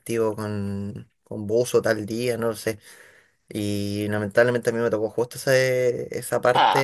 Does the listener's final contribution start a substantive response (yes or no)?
no